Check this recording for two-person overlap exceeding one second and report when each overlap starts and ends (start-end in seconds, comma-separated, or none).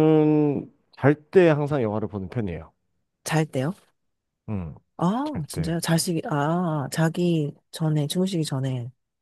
none